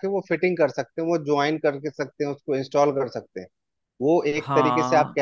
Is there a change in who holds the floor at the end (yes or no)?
no